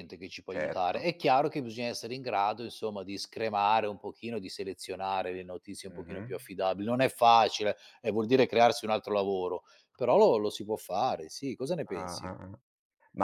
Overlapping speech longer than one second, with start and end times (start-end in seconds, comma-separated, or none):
none